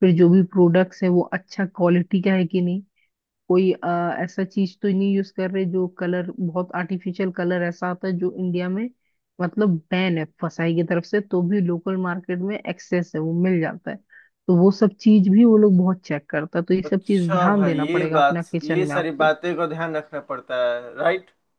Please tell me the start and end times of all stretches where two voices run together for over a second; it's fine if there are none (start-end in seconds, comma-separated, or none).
16.9-19.3